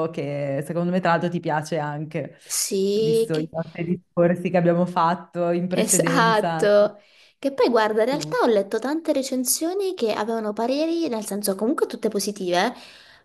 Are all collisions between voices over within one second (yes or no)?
no